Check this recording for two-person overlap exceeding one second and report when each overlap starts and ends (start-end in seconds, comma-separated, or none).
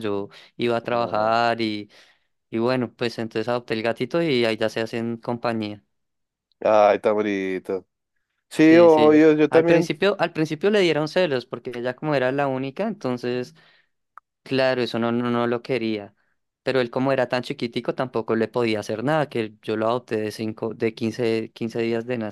8.6-9.9